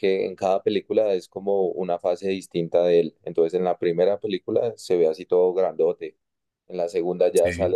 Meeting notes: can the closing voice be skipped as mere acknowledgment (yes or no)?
yes